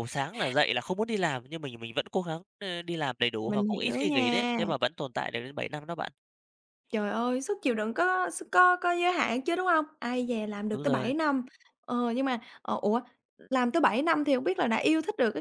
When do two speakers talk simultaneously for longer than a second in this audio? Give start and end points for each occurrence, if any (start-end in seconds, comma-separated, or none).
3.5-4.7